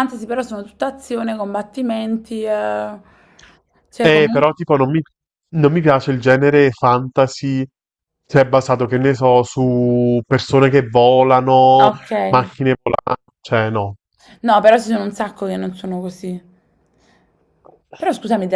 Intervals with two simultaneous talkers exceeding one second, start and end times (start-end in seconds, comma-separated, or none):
none